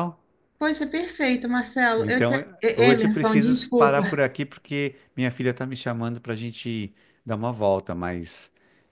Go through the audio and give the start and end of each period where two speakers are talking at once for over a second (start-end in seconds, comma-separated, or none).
2.0-4.2